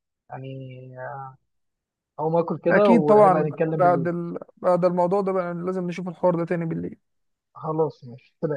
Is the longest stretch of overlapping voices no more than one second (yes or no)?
no